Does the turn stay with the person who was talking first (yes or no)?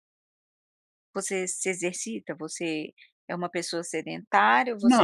no